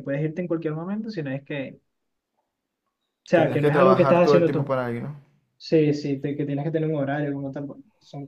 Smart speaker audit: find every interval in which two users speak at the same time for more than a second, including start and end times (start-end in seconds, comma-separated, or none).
3.3-4.7